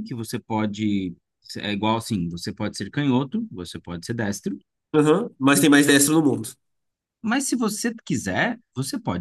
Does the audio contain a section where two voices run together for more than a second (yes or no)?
no